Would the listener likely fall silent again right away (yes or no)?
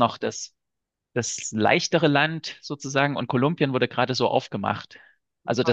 yes